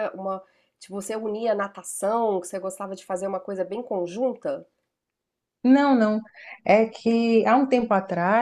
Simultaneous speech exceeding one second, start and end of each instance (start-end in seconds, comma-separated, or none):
none